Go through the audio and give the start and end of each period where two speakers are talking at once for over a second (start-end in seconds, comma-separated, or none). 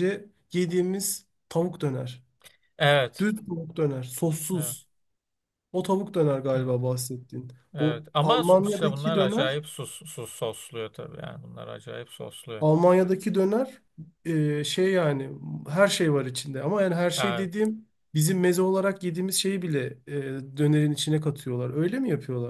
7.7-9.6